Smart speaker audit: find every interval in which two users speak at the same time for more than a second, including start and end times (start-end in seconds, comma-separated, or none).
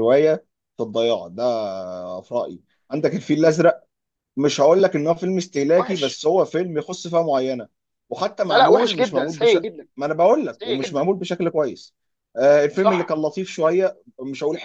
8.5-9.9